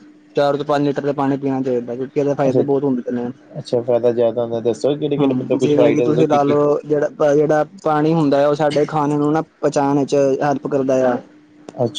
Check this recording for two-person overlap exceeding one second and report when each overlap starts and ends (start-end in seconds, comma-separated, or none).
5.2-6.6